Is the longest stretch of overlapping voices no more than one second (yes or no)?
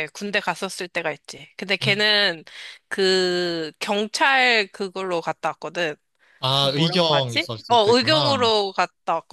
no